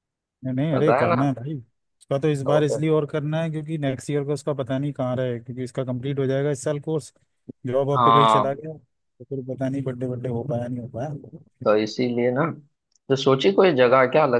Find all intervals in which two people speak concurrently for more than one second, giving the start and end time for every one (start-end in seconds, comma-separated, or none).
none